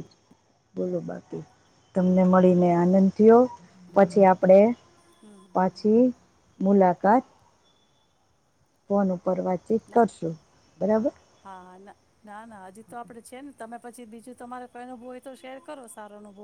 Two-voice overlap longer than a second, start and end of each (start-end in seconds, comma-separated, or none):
none